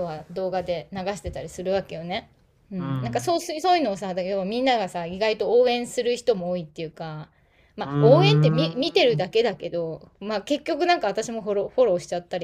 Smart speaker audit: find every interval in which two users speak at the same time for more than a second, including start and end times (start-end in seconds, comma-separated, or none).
7.8-9.2